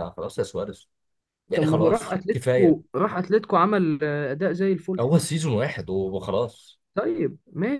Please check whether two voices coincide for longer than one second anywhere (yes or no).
yes